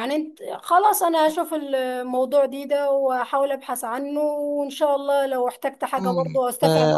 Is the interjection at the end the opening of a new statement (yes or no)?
yes